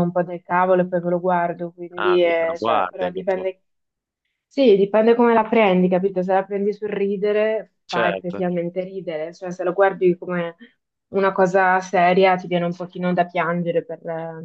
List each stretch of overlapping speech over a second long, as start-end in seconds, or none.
2.0-3.5